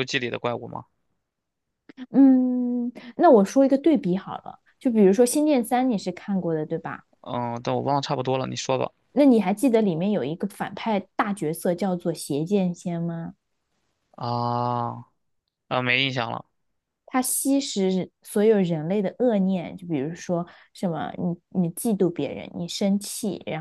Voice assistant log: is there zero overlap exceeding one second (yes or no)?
yes